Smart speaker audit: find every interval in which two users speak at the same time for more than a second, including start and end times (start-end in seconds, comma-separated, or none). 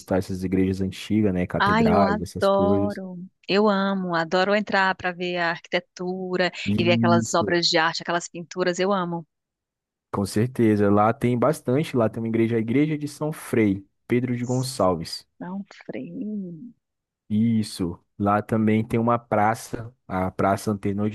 1.6-3.0